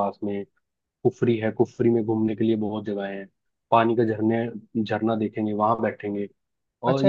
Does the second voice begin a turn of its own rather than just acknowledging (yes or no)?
yes